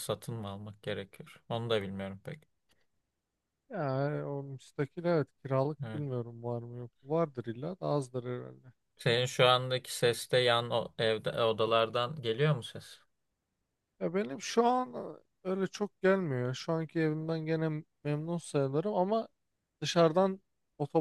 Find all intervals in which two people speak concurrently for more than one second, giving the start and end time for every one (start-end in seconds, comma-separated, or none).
none